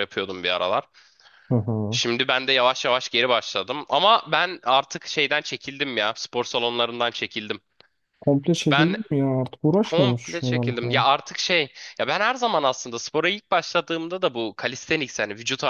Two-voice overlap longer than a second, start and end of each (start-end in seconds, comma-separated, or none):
9.8-11.1